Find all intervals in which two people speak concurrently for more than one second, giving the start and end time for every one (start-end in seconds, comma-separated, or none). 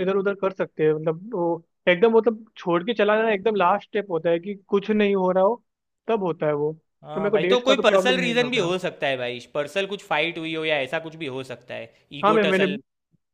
7.1-8.7